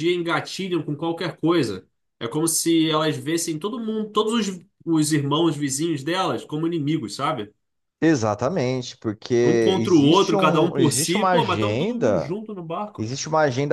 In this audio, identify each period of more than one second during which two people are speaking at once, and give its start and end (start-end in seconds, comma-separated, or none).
9.8-12.3